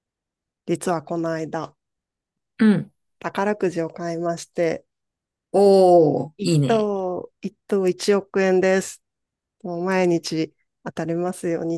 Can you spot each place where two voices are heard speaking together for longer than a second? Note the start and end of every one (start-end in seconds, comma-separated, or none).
none